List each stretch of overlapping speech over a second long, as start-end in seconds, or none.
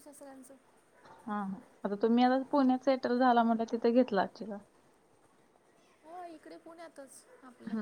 none